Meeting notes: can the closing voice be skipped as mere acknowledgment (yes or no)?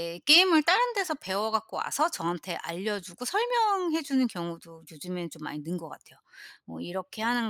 yes